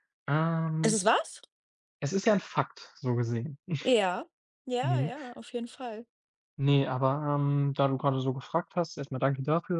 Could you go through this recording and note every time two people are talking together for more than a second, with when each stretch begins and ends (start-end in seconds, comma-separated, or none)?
none